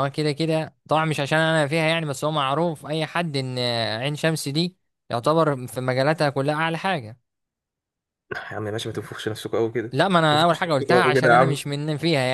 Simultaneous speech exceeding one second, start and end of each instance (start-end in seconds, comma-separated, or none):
10.3-11.7